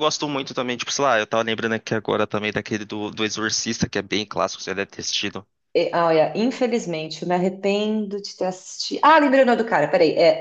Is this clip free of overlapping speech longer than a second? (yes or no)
yes